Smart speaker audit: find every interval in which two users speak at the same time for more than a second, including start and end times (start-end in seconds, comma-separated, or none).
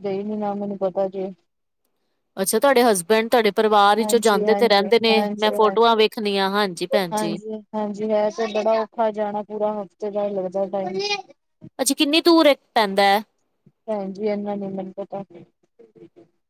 4.0-6.0